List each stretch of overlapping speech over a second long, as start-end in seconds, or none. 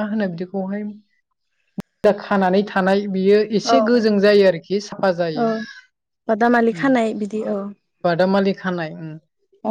none